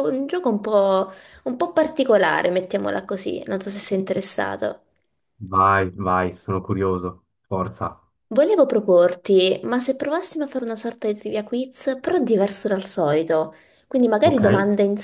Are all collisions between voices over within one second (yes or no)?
yes